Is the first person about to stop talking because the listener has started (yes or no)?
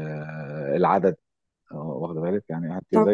no